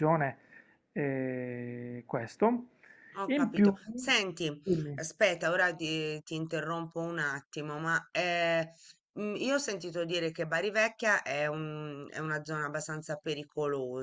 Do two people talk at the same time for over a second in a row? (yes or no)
no